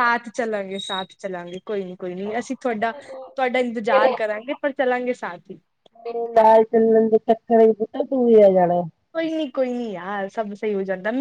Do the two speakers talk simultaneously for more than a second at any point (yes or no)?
no